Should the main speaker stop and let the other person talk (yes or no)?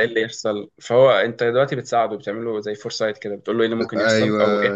no